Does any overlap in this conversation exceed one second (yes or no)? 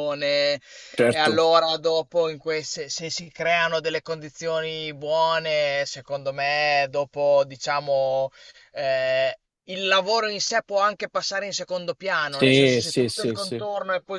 yes